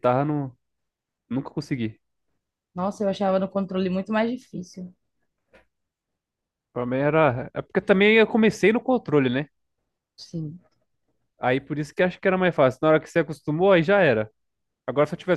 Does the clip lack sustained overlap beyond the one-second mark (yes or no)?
yes